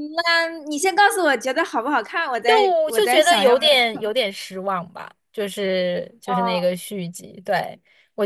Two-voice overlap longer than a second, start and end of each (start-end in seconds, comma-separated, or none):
2.5-4.0